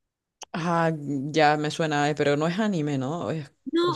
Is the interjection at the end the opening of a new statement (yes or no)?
yes